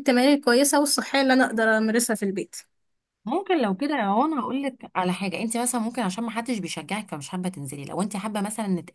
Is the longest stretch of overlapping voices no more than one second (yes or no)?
yes